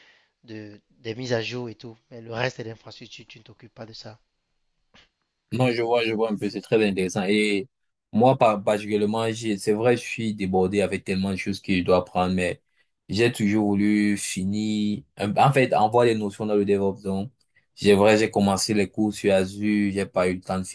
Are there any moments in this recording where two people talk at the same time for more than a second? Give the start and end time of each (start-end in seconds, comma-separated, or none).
none